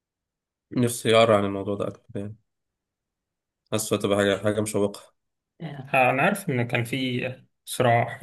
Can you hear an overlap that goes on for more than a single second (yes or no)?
no